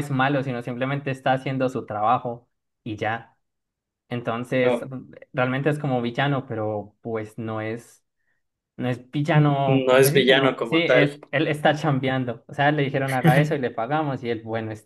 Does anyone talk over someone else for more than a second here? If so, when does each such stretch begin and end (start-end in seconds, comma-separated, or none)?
9.6-11.1